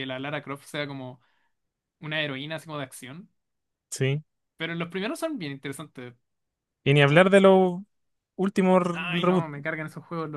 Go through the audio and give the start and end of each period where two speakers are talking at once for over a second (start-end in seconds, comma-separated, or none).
none